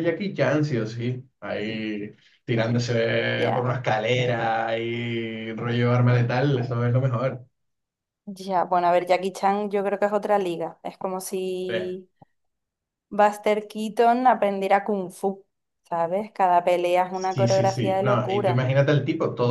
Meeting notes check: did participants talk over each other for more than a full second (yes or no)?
yes